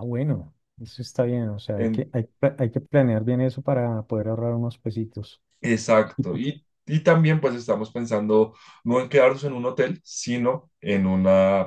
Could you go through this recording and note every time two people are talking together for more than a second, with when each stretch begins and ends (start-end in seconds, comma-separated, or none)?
none